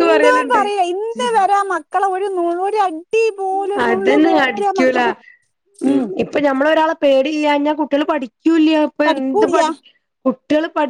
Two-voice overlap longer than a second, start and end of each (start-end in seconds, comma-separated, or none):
none